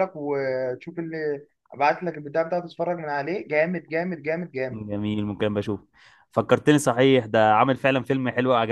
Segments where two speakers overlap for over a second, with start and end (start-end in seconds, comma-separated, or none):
none